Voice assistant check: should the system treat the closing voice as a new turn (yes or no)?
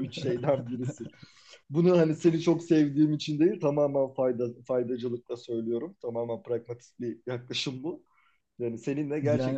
no